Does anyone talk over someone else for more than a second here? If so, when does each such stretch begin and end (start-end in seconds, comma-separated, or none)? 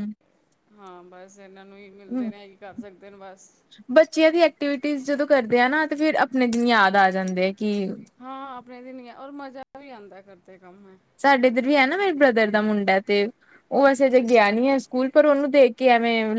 none